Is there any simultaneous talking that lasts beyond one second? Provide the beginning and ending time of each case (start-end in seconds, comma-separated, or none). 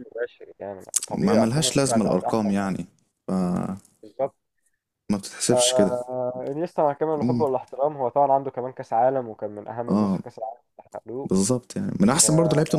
1.2-2.8